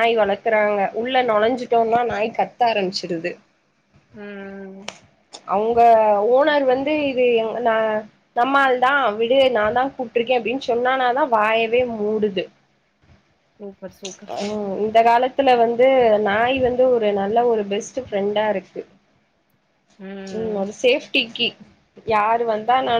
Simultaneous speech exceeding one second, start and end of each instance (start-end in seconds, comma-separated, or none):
none